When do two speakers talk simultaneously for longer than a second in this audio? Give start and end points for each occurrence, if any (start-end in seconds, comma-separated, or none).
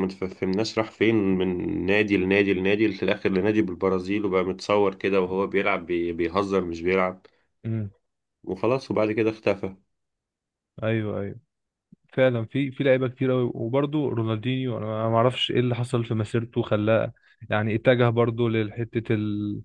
none